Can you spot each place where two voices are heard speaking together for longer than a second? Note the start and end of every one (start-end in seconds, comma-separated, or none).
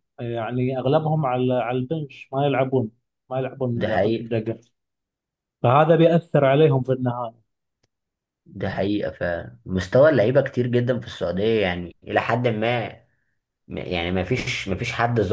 none